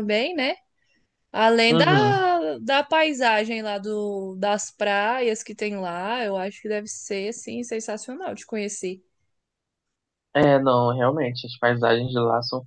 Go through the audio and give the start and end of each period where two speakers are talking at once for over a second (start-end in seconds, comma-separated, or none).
none